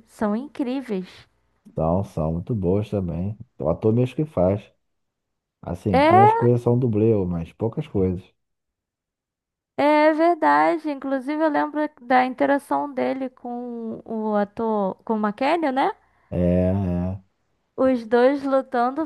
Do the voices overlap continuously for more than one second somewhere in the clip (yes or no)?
no